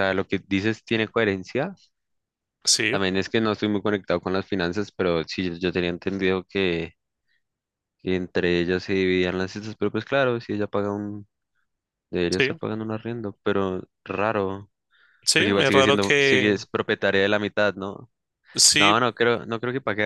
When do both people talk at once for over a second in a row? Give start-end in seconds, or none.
15.3-16.7